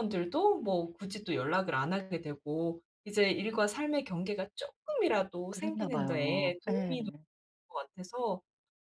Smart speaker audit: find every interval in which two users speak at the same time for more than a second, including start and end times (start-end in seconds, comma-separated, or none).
5.5-7.0